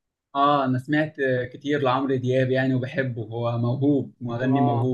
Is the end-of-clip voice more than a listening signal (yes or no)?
yes